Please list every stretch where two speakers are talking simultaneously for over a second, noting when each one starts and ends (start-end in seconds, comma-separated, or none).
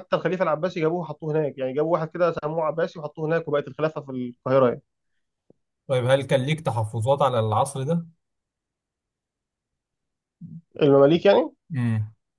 none